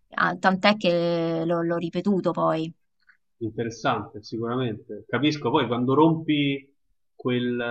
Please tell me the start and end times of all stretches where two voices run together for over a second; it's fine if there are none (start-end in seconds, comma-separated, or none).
none